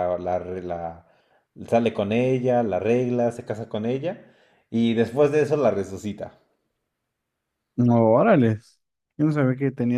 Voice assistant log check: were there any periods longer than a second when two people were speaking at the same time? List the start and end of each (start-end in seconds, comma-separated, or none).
none